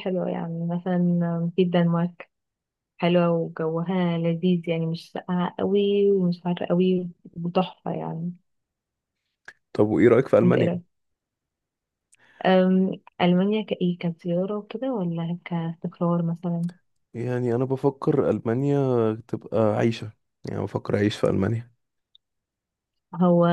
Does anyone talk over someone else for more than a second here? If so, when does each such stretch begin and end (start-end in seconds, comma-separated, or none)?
none